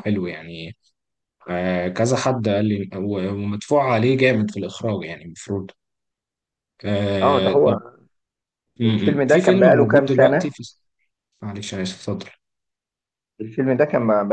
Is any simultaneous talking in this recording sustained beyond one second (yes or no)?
yes